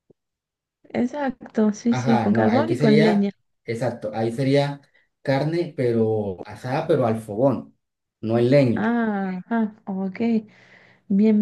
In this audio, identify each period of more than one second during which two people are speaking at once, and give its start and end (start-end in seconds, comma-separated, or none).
1.9-3.3